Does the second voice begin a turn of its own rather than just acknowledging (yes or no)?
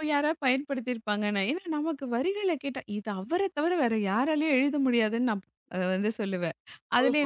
yes